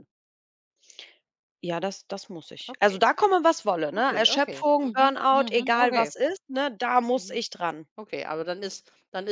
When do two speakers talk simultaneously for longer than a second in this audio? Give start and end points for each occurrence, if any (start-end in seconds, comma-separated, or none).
4.0-6.1